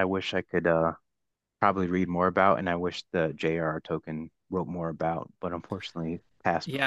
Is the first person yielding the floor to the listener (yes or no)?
yes